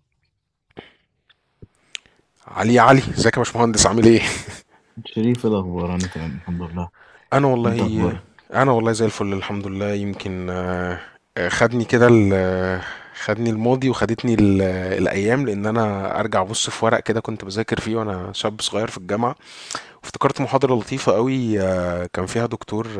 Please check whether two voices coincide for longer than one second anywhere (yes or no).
no